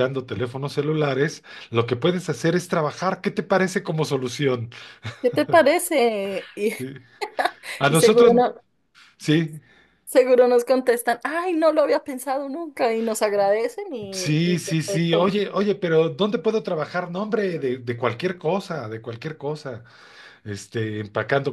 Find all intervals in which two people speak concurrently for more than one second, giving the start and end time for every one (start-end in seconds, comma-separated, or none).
14.1-15.3